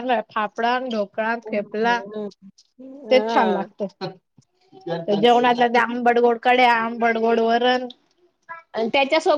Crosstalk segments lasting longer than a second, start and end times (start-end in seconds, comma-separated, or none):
none